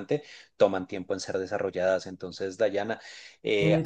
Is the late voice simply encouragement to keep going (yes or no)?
yes